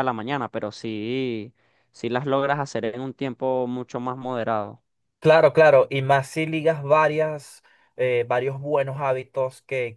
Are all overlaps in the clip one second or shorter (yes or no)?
yes